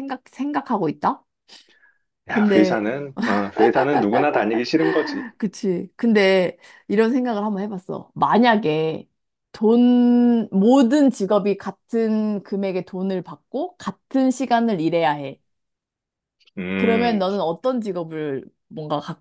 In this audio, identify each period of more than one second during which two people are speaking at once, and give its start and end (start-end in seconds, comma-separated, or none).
none